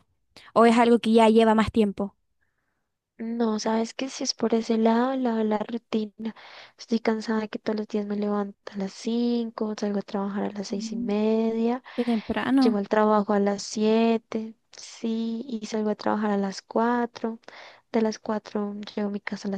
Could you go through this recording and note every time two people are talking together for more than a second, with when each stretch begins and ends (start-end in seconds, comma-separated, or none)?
none